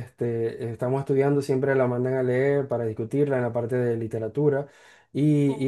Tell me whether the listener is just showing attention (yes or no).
yes